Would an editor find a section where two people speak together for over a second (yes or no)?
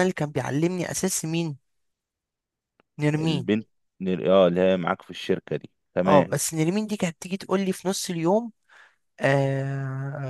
no